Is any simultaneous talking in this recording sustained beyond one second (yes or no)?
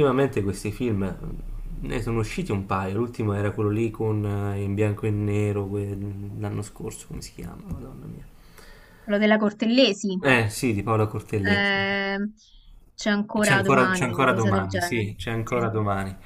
yes